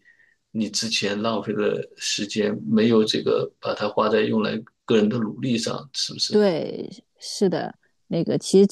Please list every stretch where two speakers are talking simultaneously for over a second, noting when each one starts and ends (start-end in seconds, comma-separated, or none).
none